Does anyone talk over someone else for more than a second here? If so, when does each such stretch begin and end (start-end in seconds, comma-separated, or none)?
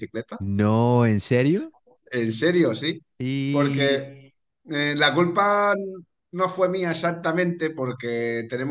none